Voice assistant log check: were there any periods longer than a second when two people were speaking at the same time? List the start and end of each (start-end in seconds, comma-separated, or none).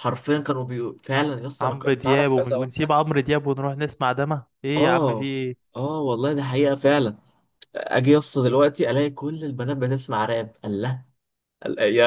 1.6-2.9